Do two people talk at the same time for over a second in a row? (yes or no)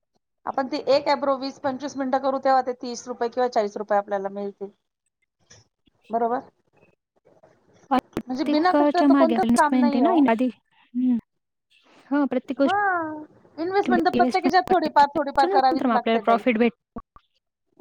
yes